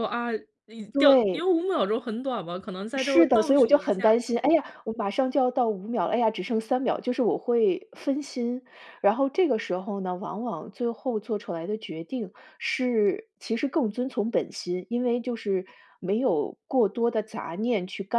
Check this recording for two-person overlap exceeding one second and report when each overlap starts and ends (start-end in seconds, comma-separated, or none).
2.9-4.2